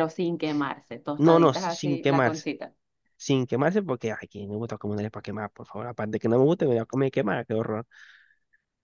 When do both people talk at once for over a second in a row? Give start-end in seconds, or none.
1.2-2.5